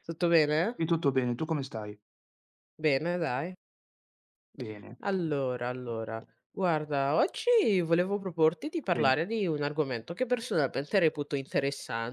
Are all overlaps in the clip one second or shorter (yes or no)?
yes